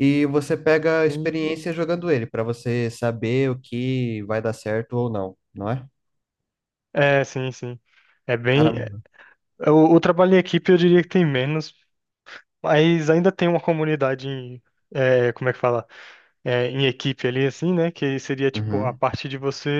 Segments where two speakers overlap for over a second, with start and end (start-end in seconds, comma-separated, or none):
none